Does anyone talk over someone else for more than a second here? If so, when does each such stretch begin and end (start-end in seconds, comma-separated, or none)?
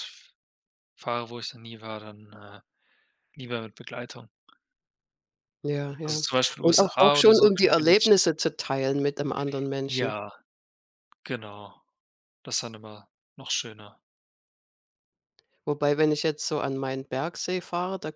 6.0-8.1